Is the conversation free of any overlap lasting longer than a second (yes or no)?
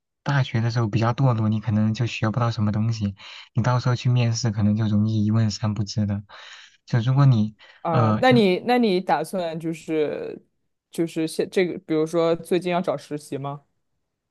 yes